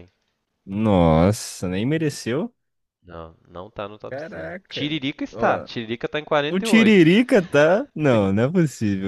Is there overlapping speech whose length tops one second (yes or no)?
yes